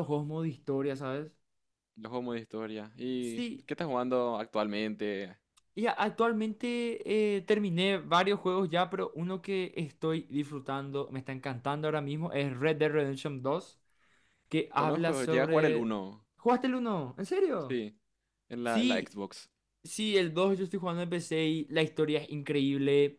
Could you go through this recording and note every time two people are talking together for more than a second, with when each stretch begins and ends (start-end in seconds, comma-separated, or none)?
14.7-15.9